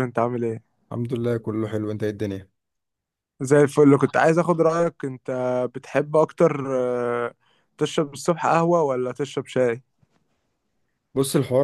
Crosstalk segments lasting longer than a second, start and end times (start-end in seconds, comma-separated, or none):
none